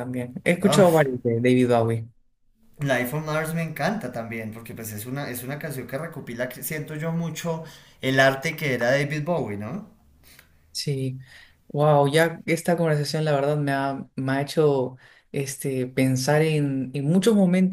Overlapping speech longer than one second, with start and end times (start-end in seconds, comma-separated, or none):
none